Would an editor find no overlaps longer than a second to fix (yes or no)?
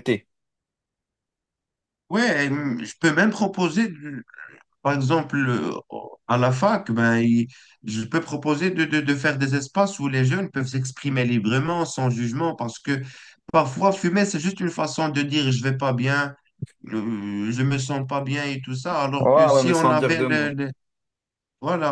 no